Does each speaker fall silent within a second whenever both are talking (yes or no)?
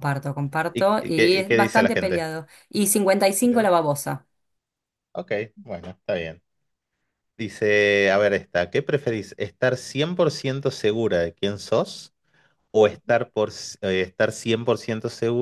no